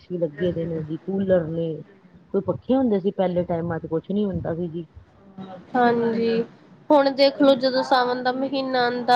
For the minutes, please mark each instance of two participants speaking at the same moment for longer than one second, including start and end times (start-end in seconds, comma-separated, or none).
none